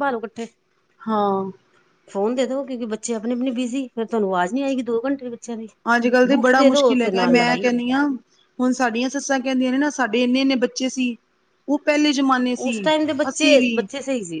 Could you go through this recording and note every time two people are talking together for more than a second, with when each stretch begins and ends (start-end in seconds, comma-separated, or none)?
6.3-7.8